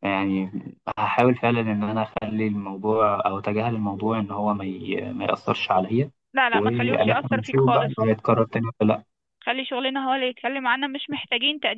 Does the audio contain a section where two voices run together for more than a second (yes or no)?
yes